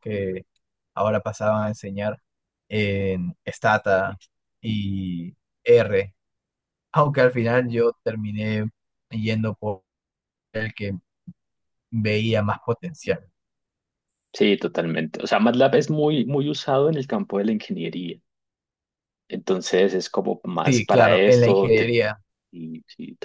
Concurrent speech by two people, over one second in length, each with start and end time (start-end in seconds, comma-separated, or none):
20.6-22.0